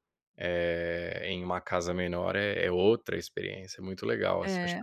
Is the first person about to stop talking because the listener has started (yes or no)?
yes